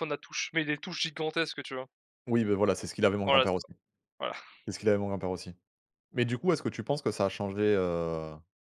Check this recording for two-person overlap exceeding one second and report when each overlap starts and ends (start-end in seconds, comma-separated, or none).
none